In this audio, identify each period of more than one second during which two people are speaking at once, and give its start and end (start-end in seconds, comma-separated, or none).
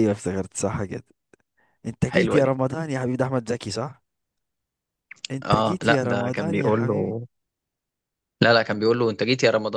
5.4-7.2